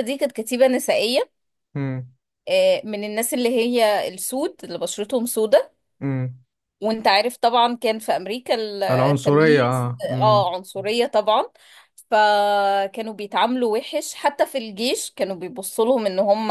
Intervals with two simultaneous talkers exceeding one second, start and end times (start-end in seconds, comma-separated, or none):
9.1-10.5